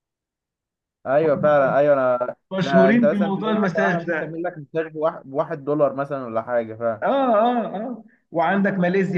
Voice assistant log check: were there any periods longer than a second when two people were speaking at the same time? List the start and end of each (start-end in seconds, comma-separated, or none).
2.5-4.3